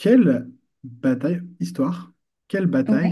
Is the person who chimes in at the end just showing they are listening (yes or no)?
yes